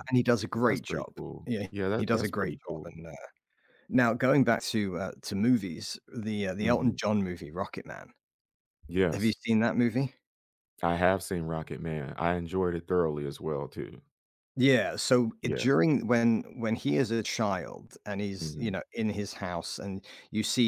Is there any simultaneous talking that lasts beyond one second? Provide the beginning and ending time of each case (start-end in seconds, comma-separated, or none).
0.7-3.0